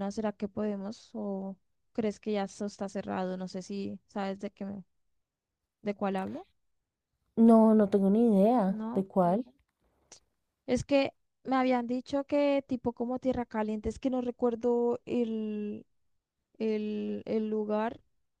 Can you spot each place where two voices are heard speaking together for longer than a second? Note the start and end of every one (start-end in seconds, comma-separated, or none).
none